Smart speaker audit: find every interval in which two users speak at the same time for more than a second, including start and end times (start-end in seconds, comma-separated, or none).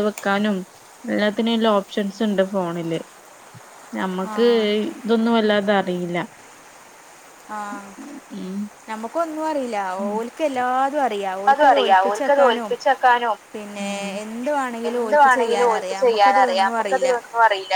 14.9-17.1